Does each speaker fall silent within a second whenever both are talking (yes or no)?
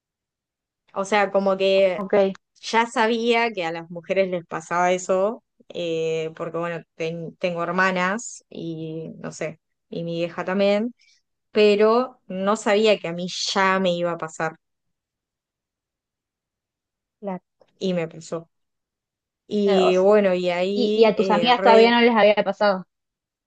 no